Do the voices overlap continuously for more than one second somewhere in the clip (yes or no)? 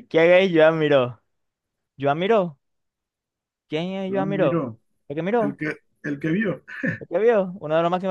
no